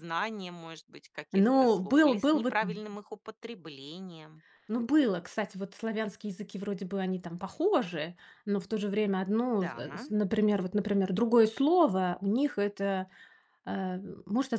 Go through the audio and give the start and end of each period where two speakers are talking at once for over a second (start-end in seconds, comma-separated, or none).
1.3-2.6